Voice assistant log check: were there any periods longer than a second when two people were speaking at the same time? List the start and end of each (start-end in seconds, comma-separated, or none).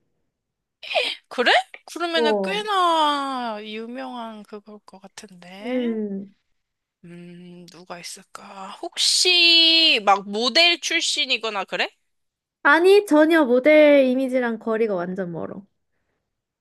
none